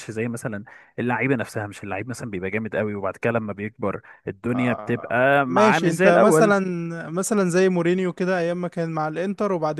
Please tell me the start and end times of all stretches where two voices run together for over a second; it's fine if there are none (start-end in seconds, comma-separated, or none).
4.5-6.6